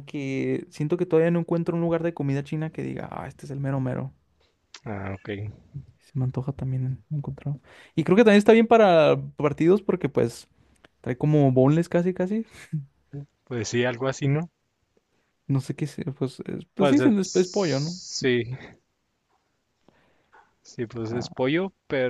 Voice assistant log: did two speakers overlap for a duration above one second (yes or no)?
yes